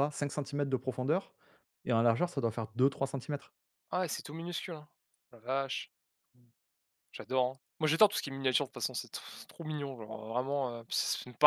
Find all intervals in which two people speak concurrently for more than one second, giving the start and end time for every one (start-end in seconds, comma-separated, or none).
none